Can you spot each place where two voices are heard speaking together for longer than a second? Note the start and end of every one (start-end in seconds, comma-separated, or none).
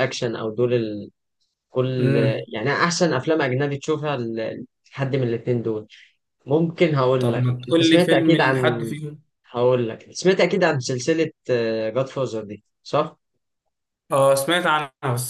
7.2-8.9